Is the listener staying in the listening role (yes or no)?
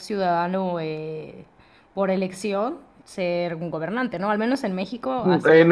no